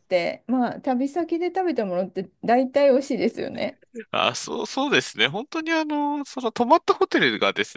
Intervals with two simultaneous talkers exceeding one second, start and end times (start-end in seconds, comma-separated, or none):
none